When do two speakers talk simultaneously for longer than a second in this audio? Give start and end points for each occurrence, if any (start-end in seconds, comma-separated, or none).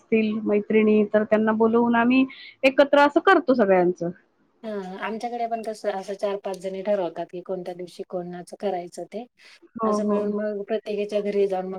none